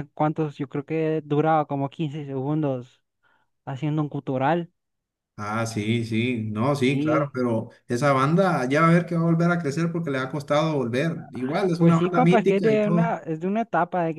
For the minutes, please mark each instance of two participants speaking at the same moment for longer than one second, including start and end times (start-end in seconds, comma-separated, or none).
11.8-13.1